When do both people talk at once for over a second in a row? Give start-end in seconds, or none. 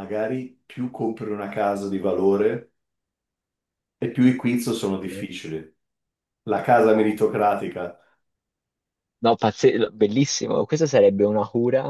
none